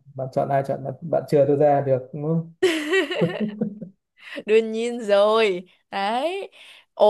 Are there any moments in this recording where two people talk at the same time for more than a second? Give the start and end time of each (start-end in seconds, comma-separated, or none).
none